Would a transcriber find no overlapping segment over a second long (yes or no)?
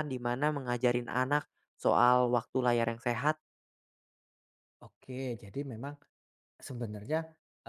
yes